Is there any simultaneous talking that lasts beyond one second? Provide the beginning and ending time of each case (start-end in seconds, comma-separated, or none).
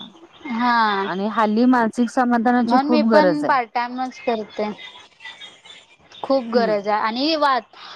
none